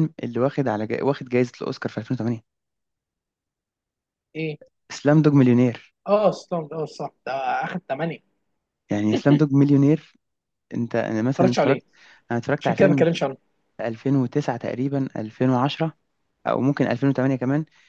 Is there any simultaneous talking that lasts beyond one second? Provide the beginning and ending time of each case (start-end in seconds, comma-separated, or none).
none